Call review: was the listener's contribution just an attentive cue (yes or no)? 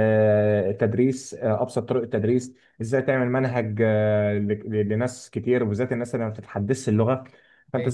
yes